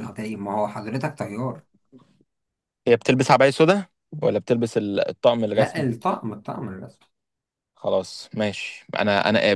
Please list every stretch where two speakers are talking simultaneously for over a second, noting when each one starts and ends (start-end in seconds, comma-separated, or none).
none